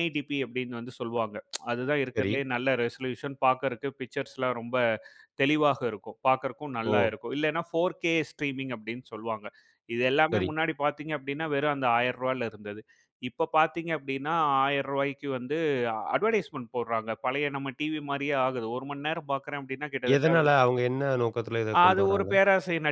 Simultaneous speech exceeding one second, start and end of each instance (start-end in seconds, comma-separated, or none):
none